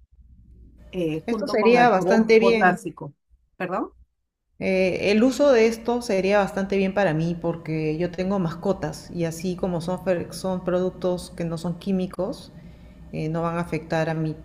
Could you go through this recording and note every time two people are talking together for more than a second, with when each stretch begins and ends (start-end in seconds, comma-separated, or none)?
1.2-2.8